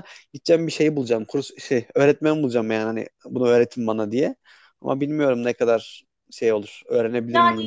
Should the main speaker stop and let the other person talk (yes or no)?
yes